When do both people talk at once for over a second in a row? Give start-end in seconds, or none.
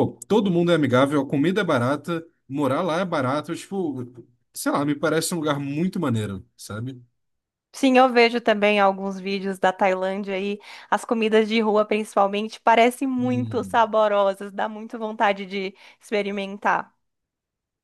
none